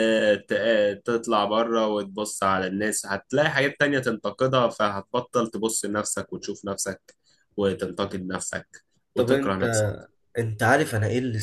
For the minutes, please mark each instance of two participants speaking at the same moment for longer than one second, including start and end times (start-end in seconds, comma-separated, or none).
none